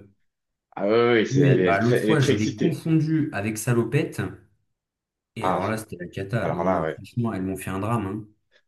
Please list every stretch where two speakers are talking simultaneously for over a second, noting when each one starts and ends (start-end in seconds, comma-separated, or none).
1.3-2.8